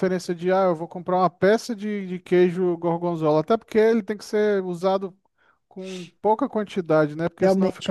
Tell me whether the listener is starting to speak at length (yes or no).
yes